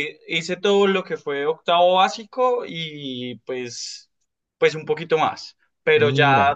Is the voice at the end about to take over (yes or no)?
no